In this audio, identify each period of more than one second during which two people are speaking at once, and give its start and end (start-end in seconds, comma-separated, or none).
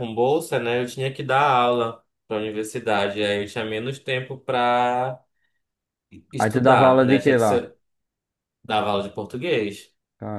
6.4-7.7